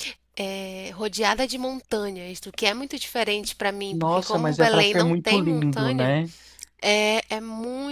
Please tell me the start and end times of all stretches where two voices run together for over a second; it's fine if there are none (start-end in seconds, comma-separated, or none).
3.9-6.1